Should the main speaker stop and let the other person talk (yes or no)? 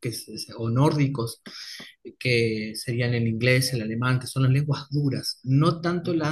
no